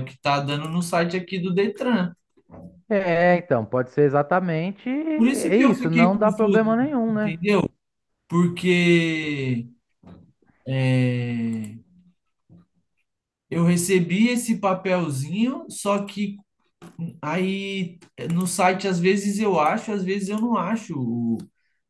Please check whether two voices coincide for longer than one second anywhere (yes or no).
yes